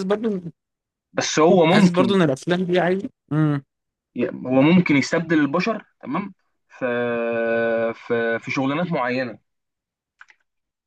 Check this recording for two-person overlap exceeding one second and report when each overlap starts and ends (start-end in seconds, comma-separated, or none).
none